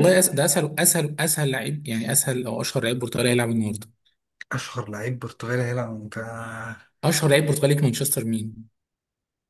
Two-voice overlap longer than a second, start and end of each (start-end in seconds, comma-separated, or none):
none